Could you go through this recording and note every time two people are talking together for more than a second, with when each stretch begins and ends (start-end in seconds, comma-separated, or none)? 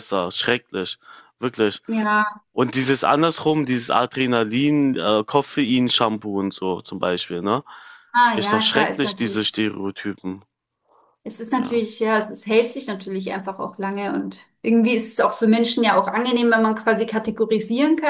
8.3-9.7